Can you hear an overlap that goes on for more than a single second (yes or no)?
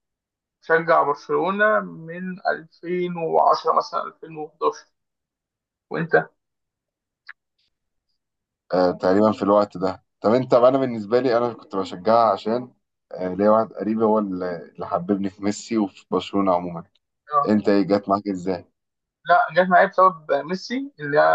no